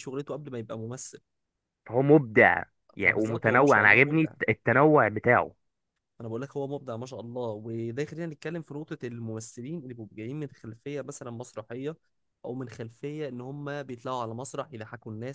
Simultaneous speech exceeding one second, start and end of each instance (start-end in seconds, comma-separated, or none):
3.0-4.3